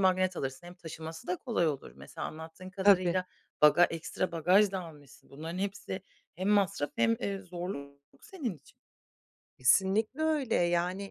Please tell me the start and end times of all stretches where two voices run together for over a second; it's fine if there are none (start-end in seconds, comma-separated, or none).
none